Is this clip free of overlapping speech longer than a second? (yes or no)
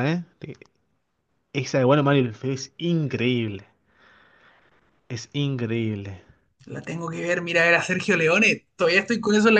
yes